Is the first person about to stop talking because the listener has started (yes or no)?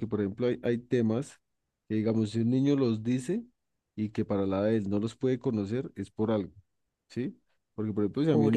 no